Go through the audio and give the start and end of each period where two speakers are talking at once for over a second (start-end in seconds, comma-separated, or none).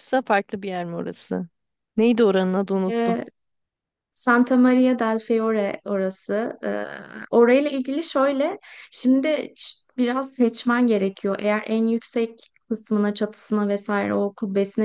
none